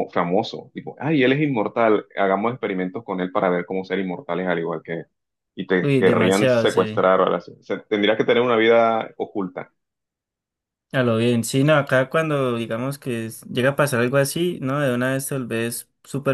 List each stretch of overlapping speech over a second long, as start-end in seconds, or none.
5.8-7.0